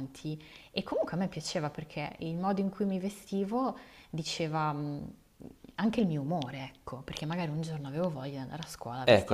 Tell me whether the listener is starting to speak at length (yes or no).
yes